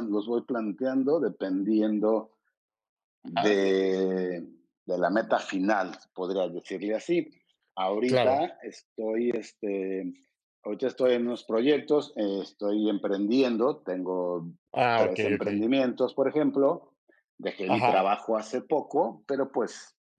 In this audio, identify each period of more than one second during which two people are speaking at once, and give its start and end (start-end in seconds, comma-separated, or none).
none